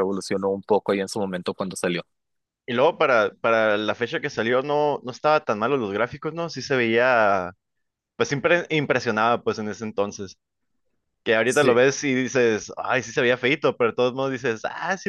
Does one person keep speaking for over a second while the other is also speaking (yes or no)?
no